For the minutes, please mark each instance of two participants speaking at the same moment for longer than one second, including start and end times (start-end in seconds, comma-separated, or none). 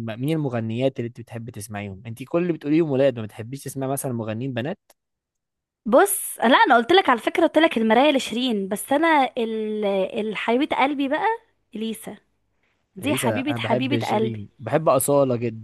13.0-14.4